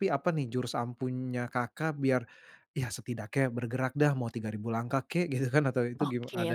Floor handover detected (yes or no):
yes